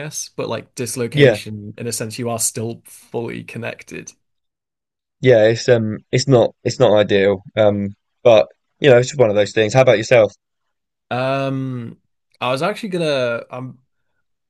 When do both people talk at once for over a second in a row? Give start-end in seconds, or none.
none